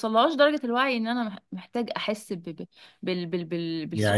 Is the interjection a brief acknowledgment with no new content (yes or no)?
no